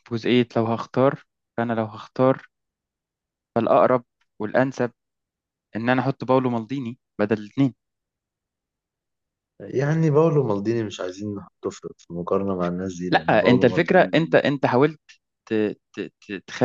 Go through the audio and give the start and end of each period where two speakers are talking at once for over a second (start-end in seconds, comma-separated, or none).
13.1-14.4